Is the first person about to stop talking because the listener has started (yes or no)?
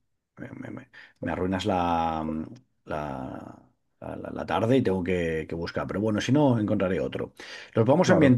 no